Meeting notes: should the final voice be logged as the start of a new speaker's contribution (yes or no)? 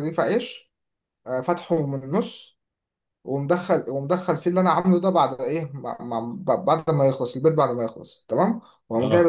no